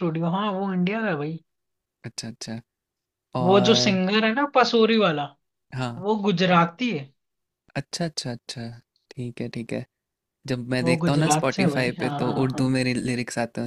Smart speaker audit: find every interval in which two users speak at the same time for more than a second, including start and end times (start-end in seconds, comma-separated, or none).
10.8-12.7